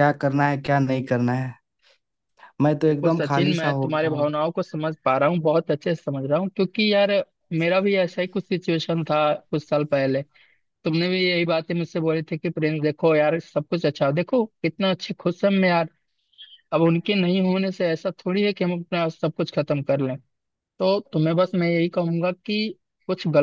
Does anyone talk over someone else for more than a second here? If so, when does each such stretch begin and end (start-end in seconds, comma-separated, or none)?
2.9-4.2